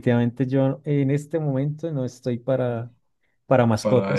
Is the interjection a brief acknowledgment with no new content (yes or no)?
yes